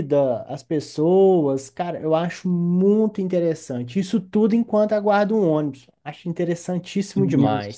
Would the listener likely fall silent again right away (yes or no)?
no